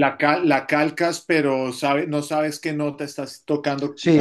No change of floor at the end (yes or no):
no